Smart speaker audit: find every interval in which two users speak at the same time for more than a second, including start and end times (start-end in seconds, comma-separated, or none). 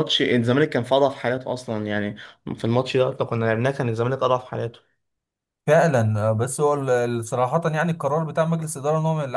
none